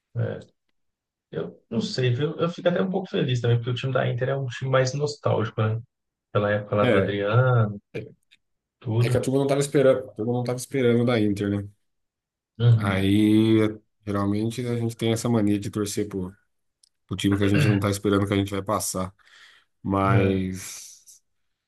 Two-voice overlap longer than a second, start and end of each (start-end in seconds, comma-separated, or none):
none